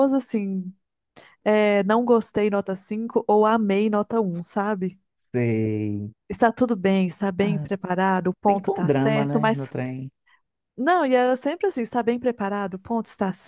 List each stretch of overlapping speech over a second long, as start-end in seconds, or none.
8.5-9.7